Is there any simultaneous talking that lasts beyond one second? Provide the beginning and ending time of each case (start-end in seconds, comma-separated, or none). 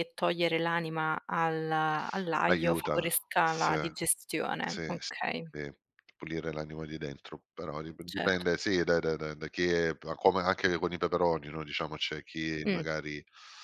2.5-3.7